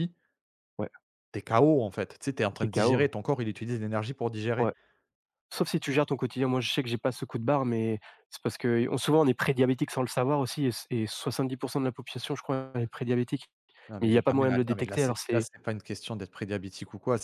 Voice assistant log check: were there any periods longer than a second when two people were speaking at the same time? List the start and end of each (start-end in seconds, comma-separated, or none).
14.0-15.5